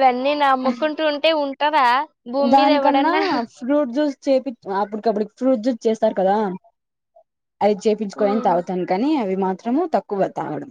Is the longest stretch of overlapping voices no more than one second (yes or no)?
yes